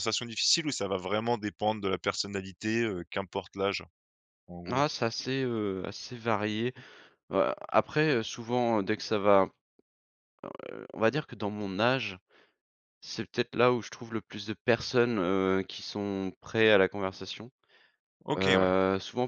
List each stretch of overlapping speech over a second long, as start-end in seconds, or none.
none